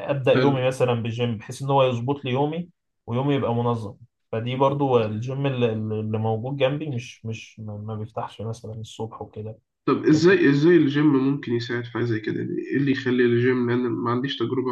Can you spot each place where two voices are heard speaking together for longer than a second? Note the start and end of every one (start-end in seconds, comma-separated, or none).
none